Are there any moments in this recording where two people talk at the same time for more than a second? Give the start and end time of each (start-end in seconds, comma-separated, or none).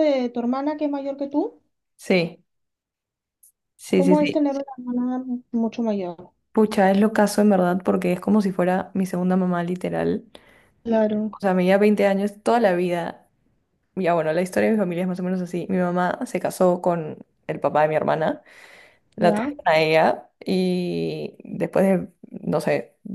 none